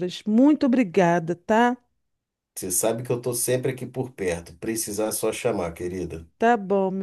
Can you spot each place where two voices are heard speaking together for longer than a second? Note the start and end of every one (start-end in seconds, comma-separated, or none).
none